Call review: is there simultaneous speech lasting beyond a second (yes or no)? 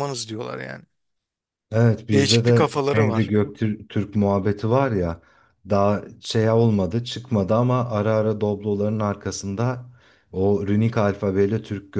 yes